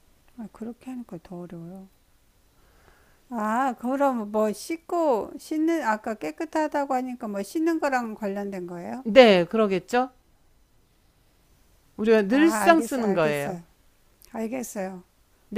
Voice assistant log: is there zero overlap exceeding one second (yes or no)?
no